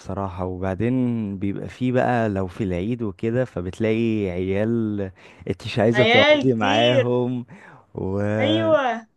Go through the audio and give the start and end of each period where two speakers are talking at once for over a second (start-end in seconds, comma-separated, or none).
5.9-7.1